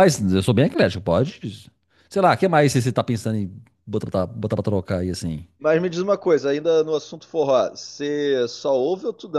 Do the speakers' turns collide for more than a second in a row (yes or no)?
no